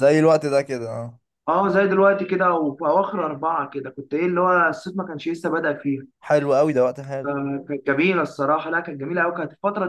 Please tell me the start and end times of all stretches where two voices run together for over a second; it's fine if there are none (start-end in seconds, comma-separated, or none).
none